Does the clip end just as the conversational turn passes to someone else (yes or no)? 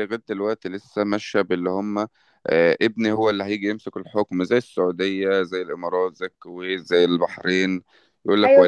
yes